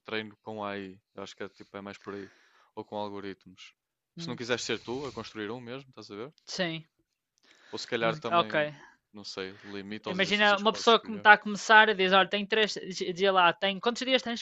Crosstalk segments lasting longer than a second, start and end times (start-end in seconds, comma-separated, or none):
10.1-11.2